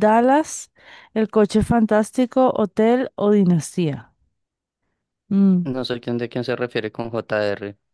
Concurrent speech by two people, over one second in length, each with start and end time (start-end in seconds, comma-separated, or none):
none